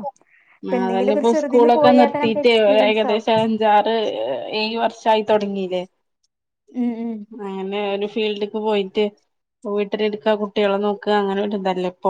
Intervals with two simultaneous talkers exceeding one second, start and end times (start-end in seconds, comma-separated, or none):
0.8-3.3